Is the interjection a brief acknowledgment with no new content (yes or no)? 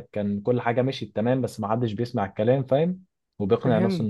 no